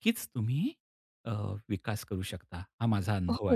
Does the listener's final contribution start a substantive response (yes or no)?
yes